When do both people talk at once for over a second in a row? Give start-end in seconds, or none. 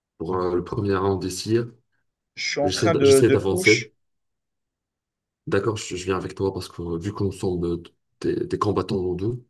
2.6-3.9